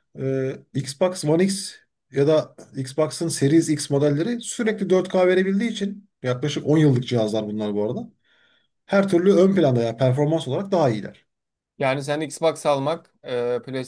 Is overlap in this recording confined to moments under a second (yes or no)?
yes